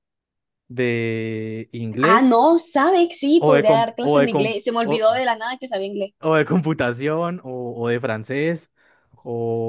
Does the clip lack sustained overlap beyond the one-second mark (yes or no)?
no